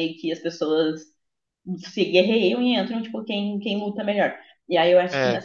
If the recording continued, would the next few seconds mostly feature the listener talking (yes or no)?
no